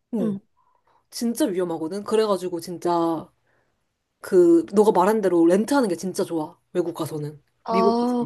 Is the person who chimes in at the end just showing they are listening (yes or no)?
no